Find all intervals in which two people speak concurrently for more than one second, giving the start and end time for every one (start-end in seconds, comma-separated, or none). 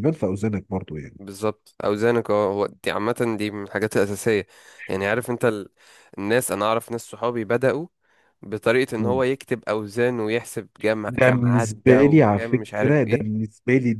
11.1-13.4